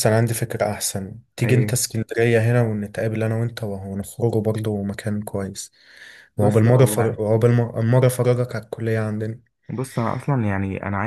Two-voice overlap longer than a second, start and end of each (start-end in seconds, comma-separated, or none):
none